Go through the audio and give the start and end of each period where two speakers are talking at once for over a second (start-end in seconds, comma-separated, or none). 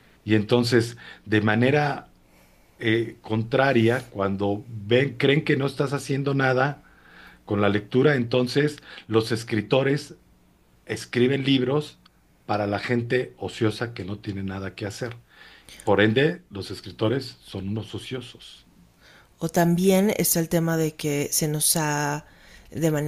none